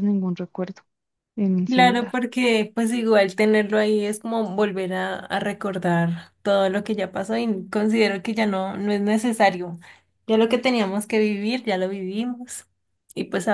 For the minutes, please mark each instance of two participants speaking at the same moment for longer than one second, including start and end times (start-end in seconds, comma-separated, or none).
none